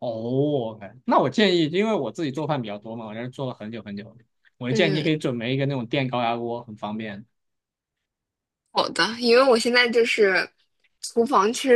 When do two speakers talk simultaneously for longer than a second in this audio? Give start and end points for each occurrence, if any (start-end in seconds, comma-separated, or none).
none